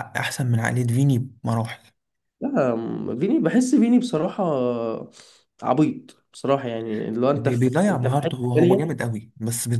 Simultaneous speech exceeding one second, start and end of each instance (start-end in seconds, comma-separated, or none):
7.2-8.9